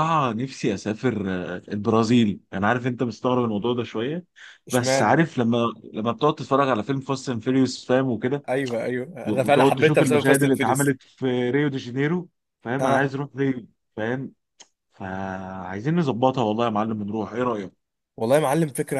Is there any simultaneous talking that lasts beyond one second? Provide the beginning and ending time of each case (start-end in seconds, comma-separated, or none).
9.3-10.9